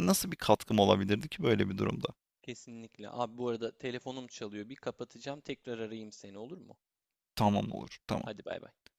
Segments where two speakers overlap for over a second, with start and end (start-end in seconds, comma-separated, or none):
none